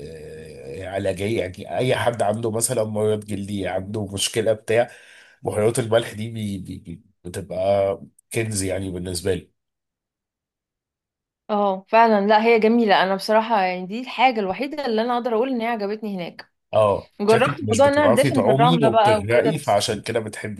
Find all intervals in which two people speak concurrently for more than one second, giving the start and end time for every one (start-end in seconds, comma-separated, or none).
17.2-19.8